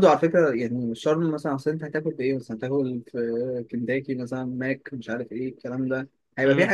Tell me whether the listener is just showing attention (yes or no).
yes